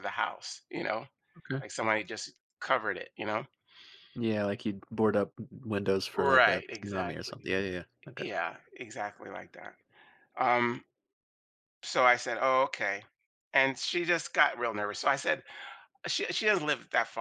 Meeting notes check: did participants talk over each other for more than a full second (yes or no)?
yes